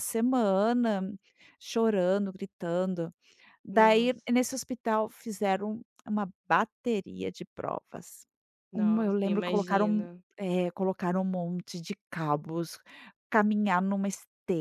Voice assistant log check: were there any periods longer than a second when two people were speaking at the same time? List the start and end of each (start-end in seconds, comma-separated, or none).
8.7-10.2